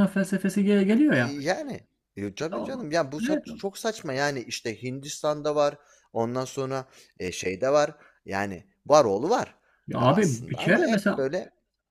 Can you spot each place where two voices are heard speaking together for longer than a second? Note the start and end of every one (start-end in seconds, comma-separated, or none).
10.0-11.2